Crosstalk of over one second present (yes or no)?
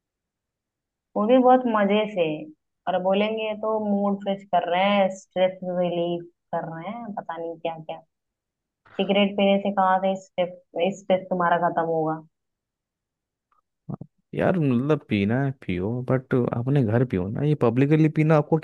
no